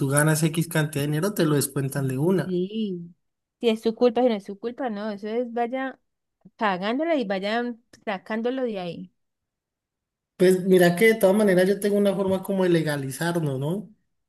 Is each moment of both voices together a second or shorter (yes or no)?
yes